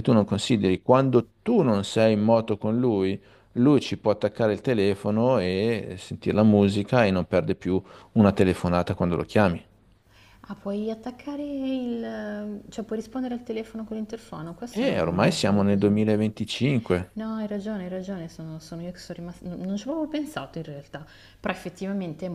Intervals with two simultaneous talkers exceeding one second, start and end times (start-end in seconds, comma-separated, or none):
14.7-16.2